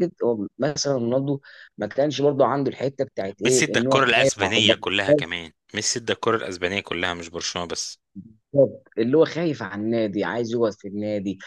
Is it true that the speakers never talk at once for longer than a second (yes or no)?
no